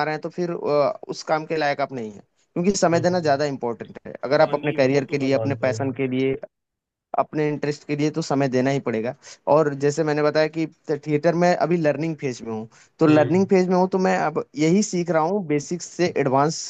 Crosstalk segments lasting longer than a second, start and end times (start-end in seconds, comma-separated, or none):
4.4-5.8